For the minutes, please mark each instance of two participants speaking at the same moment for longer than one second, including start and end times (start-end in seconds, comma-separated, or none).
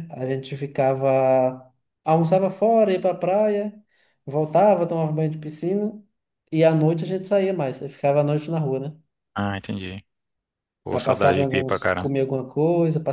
10.9-12.1